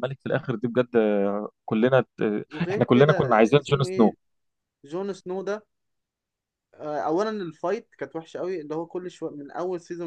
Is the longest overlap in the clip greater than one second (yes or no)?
yes